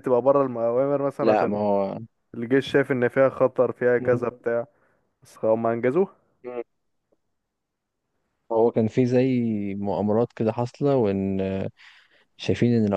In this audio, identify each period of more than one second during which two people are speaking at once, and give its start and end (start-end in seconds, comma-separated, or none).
none